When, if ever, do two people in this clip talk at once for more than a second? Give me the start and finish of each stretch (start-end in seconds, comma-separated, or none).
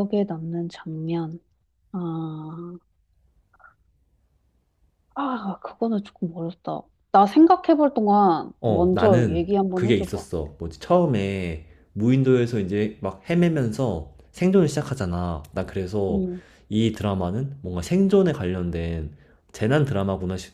8.6-10.2